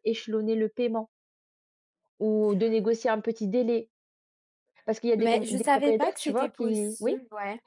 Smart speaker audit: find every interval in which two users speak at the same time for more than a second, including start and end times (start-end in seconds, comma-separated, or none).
5.2-7.2